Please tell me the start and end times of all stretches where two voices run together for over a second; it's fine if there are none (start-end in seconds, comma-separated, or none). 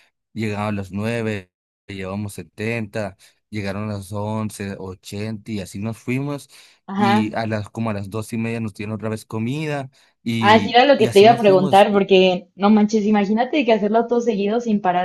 10.4-12.1